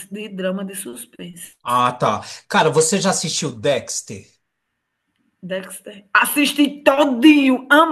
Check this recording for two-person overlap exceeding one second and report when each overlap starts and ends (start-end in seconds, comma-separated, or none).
none